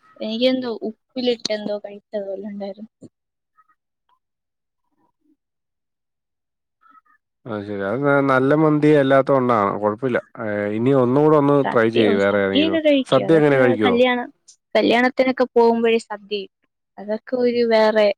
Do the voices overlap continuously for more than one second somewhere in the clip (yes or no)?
yes